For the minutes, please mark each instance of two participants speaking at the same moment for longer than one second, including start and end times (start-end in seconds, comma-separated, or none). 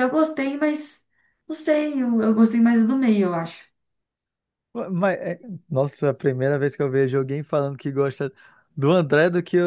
none